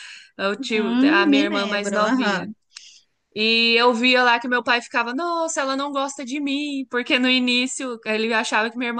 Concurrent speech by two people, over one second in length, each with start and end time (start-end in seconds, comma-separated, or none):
0.6-2.5